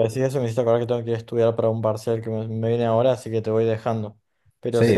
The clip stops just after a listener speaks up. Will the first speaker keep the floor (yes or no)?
no